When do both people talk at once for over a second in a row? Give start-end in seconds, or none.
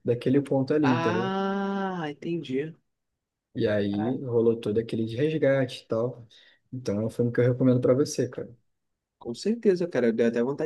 none